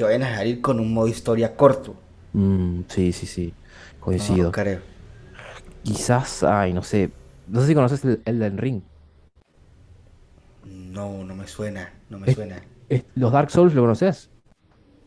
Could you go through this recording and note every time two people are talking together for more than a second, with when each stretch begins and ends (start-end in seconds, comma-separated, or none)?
none